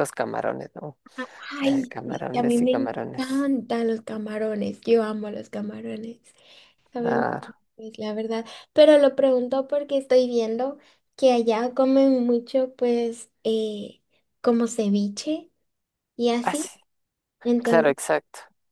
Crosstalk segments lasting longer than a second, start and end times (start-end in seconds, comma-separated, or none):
1.6-3.5